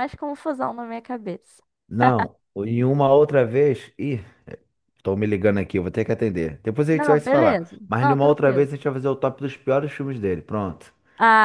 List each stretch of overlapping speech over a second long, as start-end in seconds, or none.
6.9-8.7